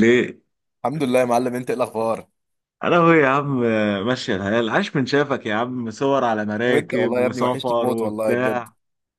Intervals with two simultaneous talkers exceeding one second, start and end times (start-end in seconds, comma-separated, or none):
6.7-8.7